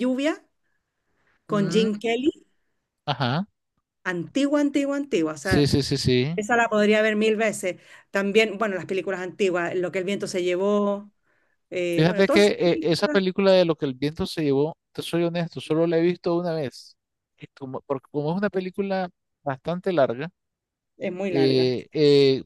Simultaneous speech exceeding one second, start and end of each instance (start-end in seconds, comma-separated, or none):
11.9-13.2